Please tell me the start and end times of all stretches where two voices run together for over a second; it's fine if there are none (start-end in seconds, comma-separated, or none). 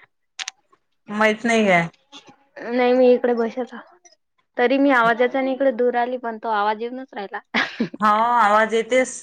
none